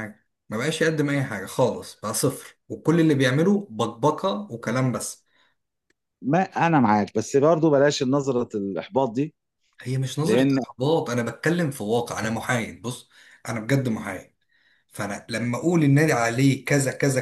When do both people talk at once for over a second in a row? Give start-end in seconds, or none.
none